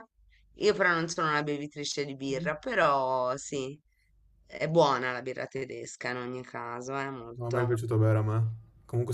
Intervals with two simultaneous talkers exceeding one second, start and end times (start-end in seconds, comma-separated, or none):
none